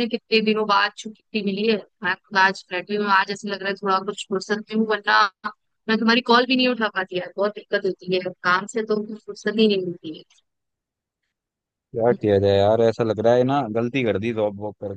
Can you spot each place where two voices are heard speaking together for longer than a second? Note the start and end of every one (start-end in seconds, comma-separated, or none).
none